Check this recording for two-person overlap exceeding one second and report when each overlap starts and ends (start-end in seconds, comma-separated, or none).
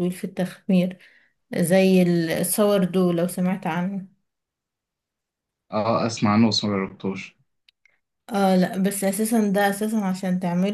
none